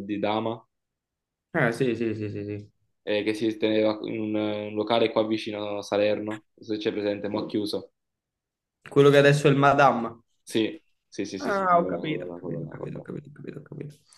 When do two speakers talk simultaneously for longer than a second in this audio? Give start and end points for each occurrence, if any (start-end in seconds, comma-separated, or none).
11.4-13.1